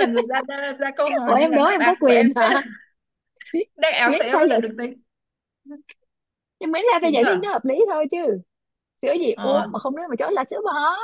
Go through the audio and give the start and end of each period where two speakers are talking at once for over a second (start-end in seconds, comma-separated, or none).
1.2-2.6